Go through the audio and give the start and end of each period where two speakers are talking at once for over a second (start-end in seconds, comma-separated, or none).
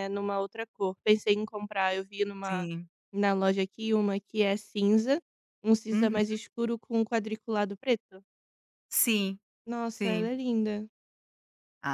none